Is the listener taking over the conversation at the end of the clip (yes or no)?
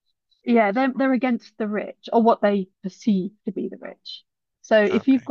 no